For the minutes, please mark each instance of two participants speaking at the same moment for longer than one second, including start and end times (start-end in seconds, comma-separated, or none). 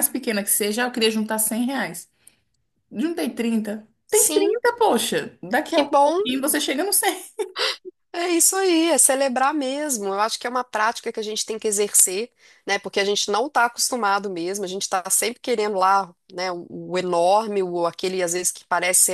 none